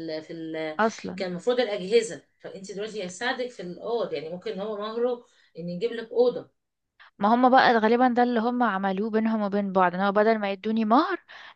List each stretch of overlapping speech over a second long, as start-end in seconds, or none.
none